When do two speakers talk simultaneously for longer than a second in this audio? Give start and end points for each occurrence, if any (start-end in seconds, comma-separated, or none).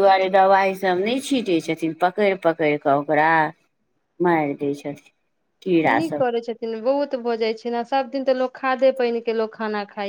none